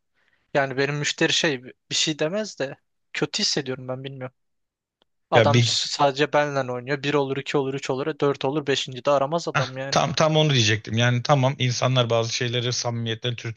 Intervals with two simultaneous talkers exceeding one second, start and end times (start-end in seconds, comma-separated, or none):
none